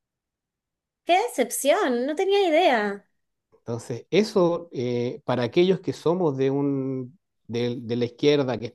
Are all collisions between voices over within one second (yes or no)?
yes